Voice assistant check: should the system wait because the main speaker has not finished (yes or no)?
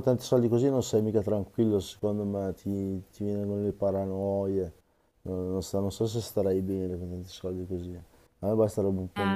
no